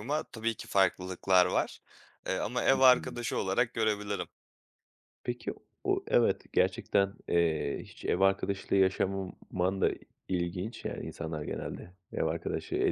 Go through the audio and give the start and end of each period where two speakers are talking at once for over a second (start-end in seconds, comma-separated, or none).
none